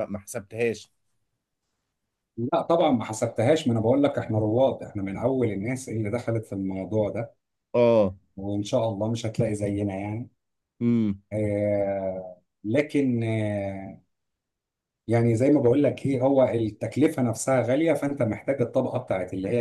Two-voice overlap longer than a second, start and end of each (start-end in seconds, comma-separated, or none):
none